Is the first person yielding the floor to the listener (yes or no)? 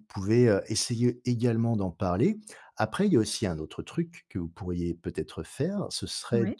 no